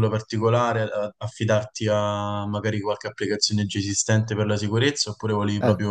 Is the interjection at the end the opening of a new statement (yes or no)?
yes